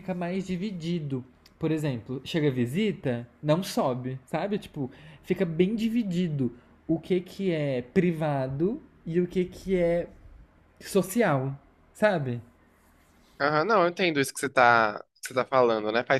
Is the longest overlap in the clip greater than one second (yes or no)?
no